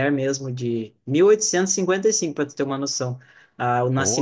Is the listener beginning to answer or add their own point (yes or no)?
no